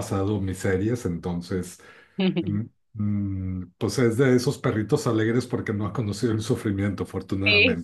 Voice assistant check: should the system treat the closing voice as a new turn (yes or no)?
yes